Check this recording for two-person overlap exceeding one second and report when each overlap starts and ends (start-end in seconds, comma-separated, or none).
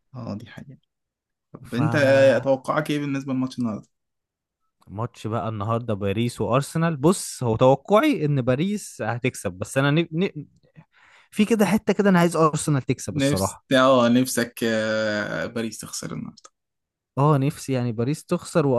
none